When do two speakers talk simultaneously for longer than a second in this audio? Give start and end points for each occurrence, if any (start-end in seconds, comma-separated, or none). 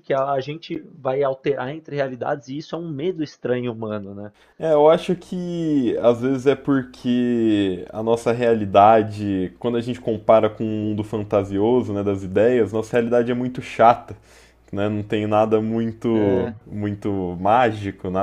none